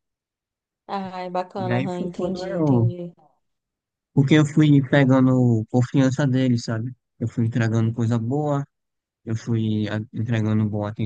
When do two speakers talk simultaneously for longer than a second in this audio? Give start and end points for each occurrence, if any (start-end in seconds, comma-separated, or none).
1.6-2.9